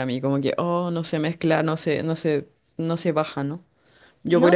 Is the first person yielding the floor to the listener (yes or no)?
no